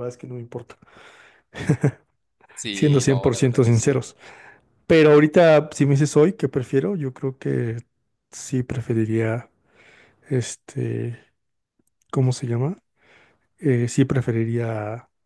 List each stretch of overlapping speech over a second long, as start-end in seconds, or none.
2.7-4.0